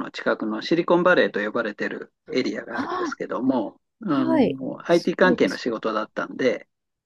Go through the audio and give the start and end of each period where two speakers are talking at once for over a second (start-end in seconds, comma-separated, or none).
4.1-5.6